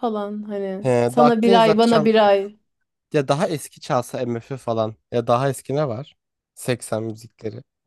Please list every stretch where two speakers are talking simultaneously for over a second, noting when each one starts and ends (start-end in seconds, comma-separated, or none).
0.8-2.2